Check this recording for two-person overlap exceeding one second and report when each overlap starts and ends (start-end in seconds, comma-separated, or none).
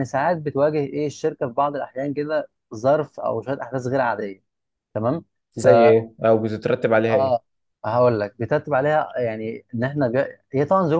none